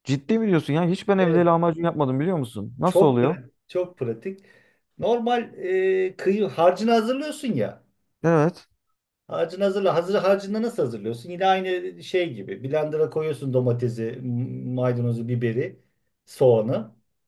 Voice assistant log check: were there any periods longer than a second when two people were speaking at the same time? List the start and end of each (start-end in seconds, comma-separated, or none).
none